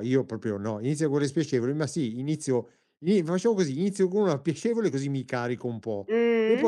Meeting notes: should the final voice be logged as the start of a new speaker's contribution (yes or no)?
no